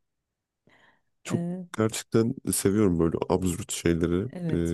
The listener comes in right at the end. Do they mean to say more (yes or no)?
yes